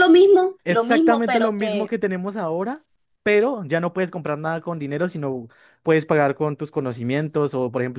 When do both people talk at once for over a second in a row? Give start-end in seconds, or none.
0.6-1.9